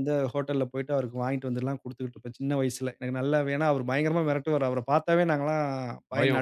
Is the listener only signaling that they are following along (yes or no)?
yes